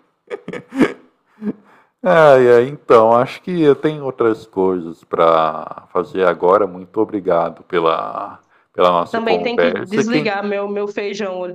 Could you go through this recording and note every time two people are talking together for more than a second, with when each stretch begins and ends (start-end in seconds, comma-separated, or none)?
9.1-10.4